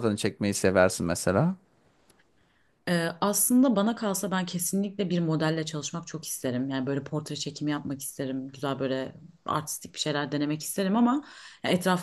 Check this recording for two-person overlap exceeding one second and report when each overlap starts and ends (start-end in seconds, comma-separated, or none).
none